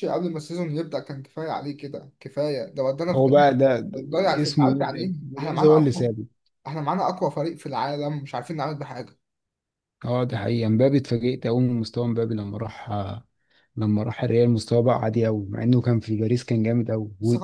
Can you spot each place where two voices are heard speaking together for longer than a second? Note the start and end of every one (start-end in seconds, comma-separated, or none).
4.4-6.1